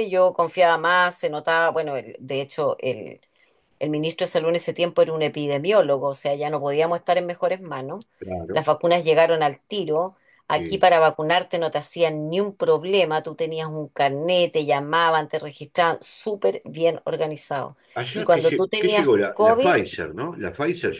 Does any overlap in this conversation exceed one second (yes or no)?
yes